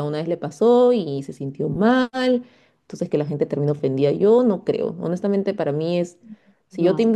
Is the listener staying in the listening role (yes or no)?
yes